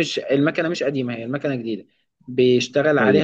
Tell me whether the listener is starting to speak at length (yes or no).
no